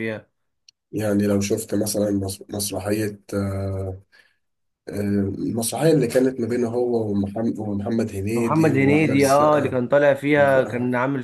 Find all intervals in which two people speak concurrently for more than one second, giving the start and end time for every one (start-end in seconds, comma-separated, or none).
8.3-9.8